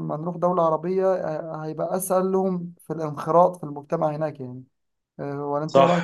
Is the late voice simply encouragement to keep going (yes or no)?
no